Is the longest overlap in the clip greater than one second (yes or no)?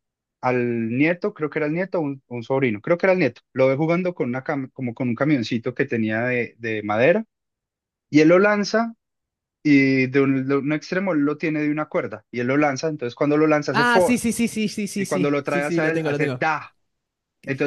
yes